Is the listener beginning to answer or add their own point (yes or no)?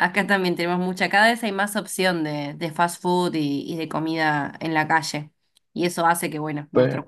yes